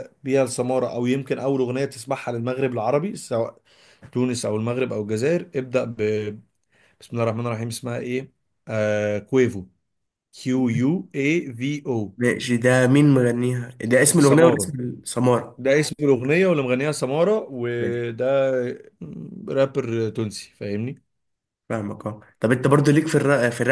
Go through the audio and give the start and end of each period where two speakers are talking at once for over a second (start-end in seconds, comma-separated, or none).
none